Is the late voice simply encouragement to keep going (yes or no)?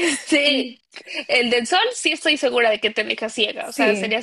yes